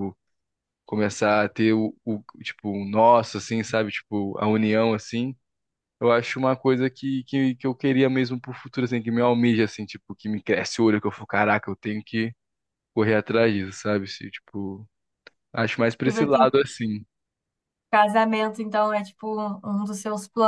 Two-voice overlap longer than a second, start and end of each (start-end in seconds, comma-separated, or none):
none